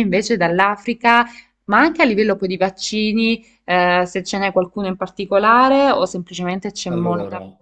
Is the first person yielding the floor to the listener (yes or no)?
yes